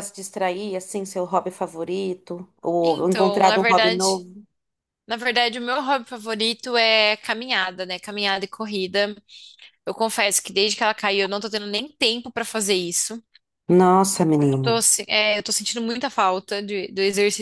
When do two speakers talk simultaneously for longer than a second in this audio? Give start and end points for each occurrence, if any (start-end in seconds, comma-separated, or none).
2.8-4.2